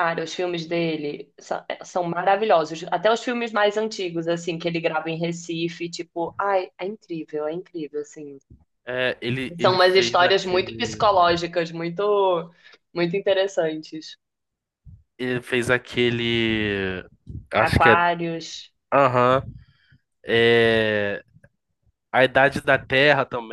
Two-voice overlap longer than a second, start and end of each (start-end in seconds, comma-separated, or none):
9.6-11.0